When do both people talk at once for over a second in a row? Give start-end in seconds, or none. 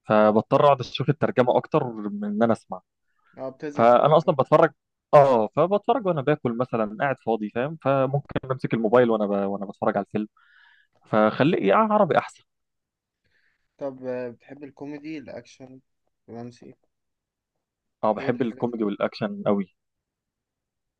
none